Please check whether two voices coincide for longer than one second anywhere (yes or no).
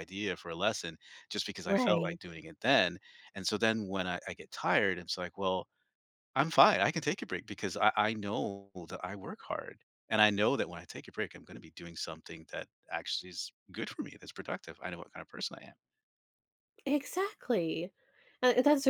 no